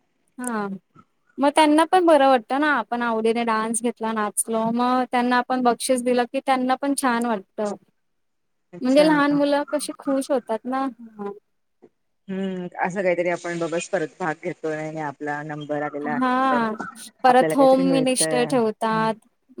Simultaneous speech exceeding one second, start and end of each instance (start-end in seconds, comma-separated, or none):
17.3-19.1